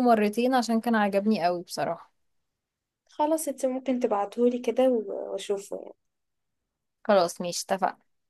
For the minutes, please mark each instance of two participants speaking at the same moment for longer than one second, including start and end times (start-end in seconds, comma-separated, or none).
none